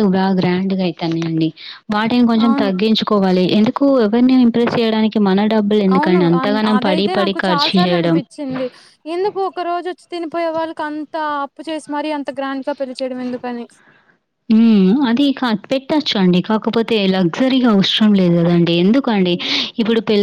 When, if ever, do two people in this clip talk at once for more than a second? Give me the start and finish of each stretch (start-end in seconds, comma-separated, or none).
6.0-8.2